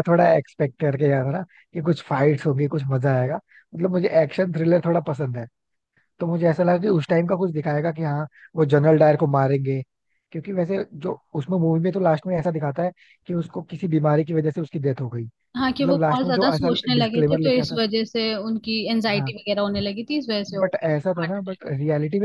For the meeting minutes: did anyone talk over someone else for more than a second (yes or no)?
yes